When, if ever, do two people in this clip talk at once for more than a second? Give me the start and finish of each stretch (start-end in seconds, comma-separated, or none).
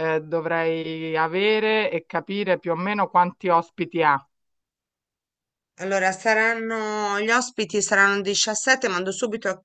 none